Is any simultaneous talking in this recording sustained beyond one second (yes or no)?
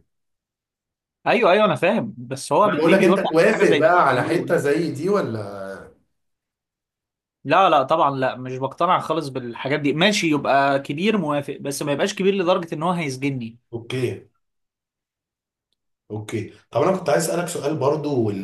yes